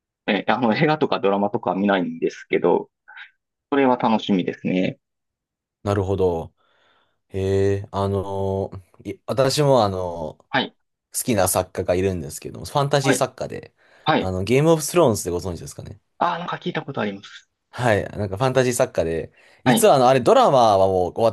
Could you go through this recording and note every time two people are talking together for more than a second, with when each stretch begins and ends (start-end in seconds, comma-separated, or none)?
none